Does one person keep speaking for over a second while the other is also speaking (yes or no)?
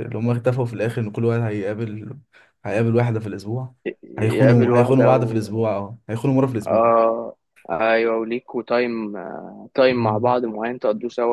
yes